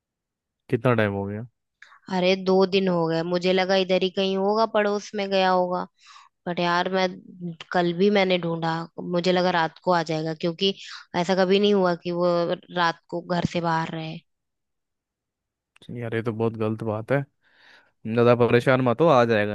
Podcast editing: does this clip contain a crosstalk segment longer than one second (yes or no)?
no